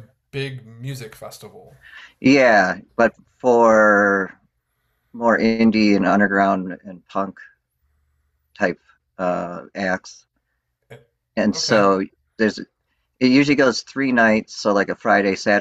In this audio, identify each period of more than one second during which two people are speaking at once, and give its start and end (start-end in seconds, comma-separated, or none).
none